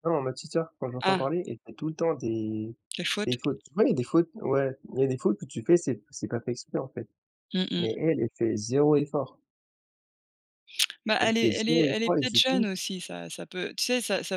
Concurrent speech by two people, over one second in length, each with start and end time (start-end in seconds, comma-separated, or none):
11.2-12.7